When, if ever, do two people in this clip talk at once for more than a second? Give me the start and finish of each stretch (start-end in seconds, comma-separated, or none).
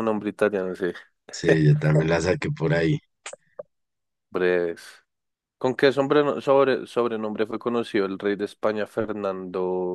none